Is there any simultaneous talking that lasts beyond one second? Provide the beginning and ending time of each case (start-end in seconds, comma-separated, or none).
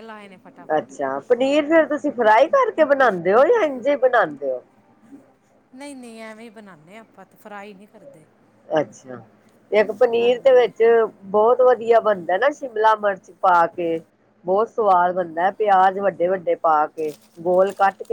none